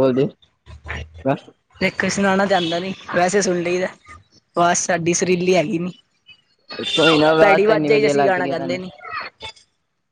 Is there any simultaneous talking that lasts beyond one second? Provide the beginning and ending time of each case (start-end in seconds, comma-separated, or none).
7.4-8.8